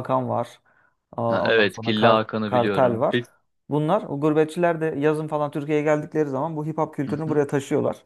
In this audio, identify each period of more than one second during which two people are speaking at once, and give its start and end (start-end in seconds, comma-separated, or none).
1.3-3.2